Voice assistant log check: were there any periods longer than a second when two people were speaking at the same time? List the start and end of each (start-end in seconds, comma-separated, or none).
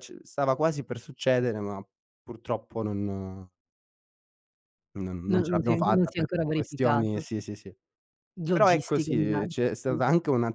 5.3-7.3, 8.5-10.0